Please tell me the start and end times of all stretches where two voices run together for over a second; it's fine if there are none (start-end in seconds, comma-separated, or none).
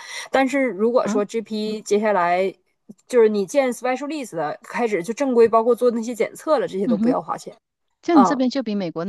none